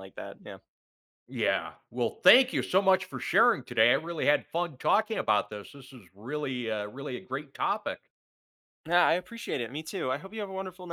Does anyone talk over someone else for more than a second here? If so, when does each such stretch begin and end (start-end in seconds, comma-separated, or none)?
none